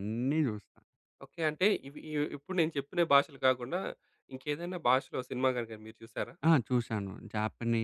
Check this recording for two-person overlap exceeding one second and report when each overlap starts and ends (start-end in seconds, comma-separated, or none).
none